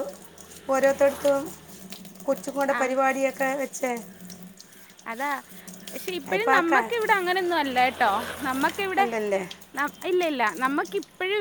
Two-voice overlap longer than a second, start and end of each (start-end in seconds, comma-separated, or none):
none